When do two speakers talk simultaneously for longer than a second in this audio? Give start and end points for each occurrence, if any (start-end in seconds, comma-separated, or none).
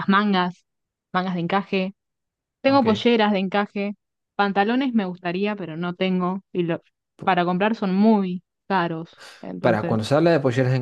none